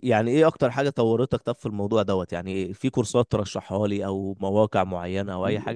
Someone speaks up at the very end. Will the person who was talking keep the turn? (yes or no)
no